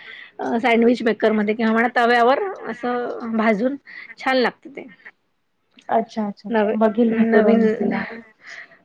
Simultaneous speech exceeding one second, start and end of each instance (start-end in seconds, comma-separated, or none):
6.6-7.9